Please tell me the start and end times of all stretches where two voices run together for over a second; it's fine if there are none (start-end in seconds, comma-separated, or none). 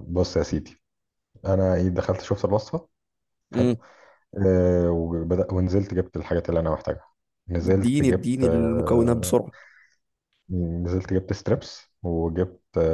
7.7-9.4